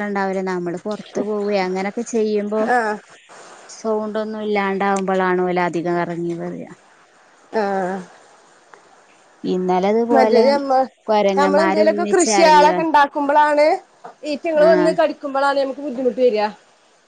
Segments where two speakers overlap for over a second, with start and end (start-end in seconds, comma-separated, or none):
11.4-12.8